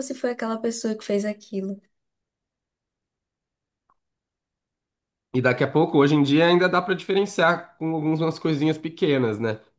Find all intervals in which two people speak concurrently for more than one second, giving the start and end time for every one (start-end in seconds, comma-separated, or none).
none